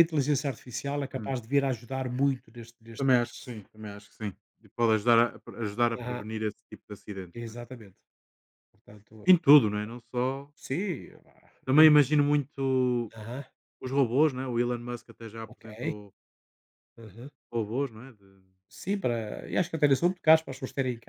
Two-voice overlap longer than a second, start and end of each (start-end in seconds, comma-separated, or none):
none